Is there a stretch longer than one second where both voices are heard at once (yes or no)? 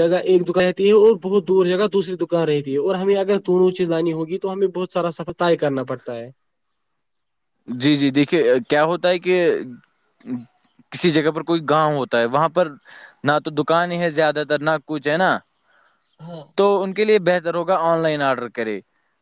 no